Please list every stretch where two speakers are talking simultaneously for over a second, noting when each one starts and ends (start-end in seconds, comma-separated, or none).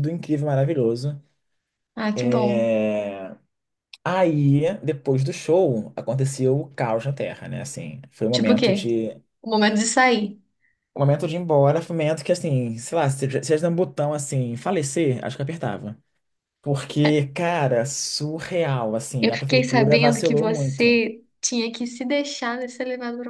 19.2-20.9